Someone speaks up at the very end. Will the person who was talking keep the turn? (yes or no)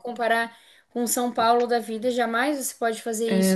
no